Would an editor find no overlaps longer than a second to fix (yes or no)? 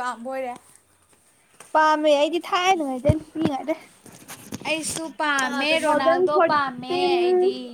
no